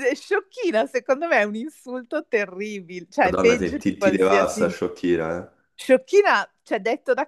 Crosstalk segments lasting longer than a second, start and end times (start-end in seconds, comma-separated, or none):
3.2-4.6